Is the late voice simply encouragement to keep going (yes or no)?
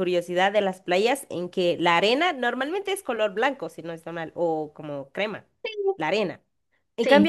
yes